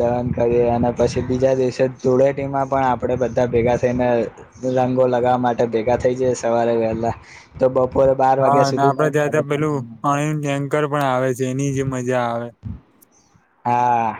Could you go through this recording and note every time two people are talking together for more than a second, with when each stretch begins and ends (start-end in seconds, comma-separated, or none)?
8.4-9.8